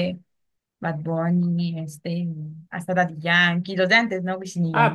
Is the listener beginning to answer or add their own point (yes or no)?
yes